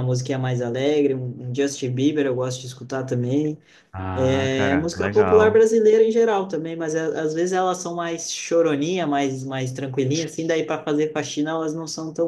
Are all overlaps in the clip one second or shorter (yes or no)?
no